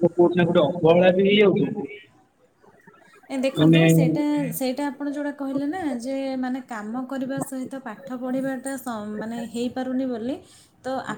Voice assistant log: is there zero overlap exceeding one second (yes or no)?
yes